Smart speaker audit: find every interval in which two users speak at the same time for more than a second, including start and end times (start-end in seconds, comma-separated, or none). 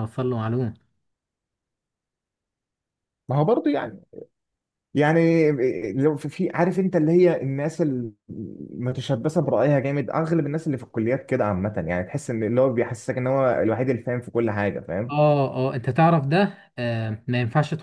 none